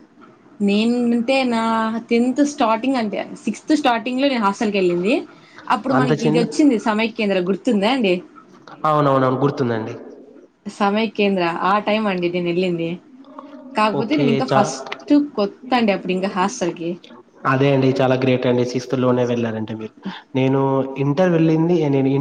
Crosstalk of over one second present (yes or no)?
no